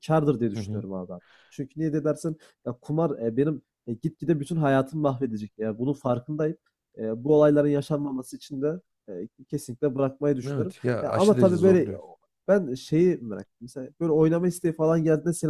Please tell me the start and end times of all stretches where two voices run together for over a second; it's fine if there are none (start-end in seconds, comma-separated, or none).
10.5-11.9